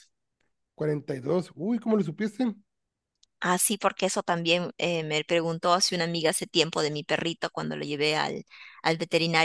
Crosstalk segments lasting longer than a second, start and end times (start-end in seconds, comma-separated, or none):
none